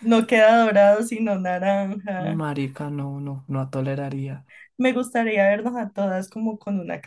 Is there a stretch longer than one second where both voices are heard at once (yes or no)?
no